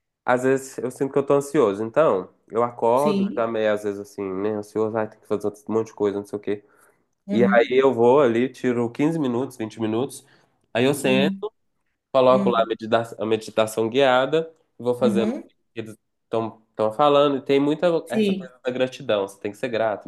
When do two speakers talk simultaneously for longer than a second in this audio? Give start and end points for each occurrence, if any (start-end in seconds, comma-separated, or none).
none